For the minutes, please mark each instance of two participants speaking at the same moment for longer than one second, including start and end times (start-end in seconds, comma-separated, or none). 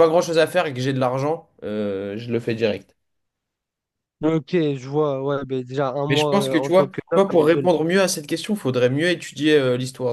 6.1-7.7